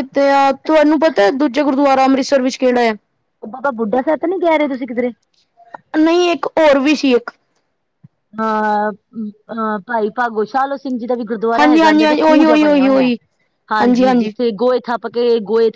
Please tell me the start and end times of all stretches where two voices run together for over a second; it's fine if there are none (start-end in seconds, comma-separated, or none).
11.6-13.1